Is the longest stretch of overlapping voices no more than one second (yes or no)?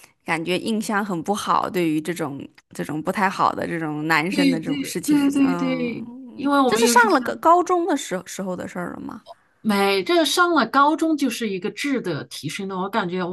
no